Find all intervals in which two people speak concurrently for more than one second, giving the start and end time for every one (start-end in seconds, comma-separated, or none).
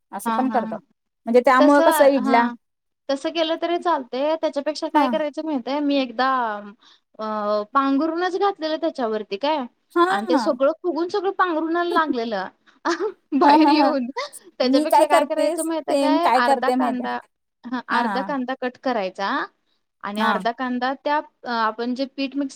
14.7-17.0